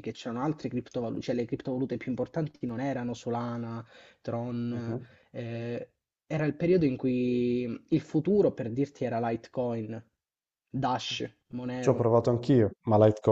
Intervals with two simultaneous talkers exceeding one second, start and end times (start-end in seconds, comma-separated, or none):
none